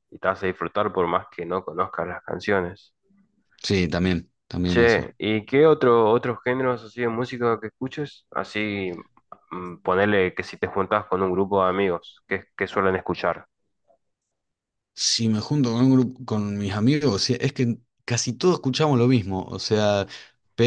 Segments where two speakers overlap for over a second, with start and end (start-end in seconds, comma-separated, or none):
none